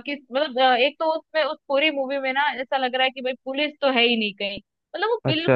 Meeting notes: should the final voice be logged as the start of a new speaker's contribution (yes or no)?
no